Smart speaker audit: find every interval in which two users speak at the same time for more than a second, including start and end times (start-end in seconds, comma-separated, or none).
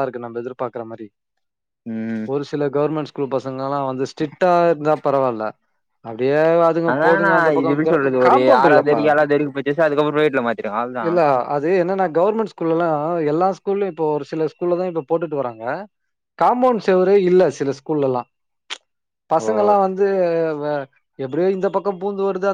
6.9-9.0